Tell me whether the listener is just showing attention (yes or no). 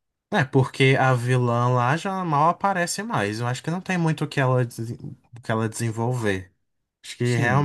no